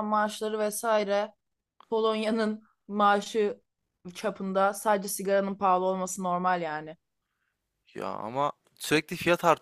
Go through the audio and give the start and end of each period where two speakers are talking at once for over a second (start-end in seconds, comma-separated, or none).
none